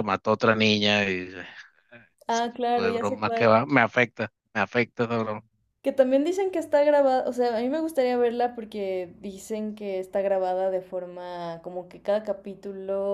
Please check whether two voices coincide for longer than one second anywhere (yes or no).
yes